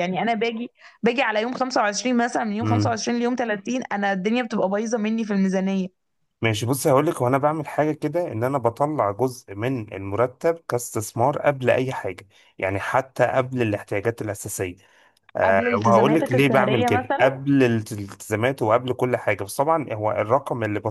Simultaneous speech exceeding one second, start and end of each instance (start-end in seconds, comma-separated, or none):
15.4-17.4